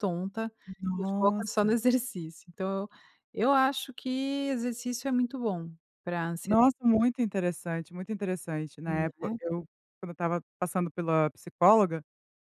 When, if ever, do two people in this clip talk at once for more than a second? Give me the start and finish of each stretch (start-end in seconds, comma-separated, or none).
none